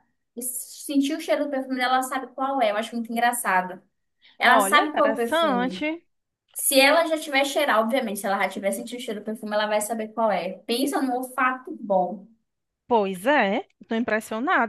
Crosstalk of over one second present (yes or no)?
yes